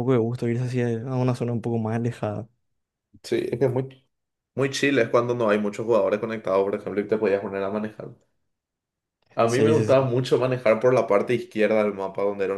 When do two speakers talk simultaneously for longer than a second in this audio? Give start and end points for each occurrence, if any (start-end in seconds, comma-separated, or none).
none